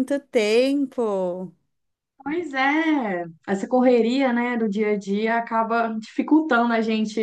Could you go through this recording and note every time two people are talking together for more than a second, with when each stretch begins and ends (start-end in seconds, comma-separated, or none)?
none